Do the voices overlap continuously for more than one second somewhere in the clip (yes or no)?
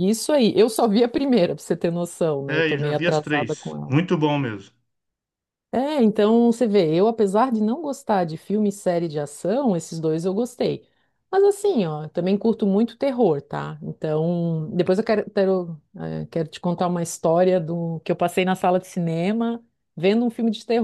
yes